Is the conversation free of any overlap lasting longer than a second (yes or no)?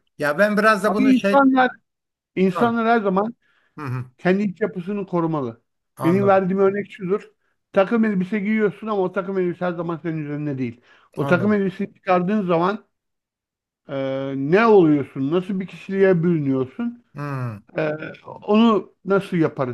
yes